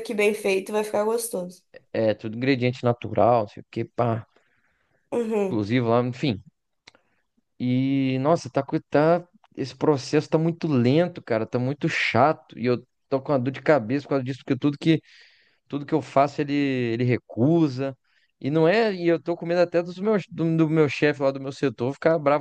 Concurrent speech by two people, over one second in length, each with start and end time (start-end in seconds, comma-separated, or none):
none